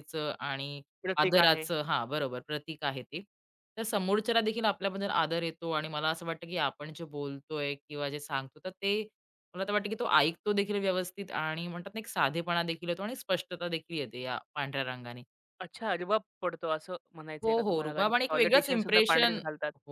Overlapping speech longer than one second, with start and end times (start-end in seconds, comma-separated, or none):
17.4-19.4